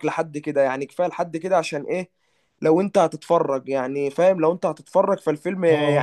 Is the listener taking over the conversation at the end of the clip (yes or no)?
yes